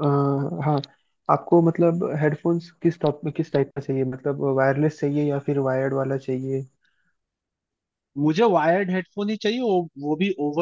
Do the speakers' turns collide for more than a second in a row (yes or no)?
no